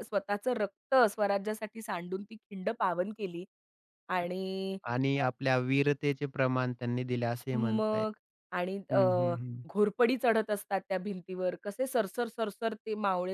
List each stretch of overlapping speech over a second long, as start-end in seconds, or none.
none